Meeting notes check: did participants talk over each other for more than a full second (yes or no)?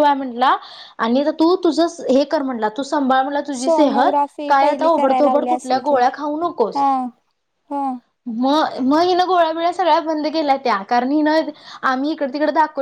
yes